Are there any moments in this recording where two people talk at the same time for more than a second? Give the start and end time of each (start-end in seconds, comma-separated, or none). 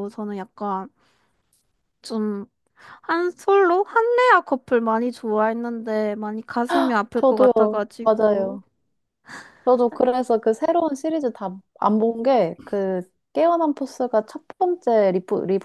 7.2-8.6